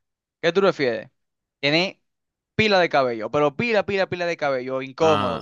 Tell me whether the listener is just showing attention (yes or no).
yes